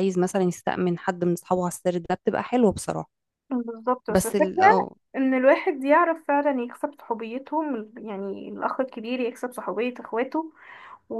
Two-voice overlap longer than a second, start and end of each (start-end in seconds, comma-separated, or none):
none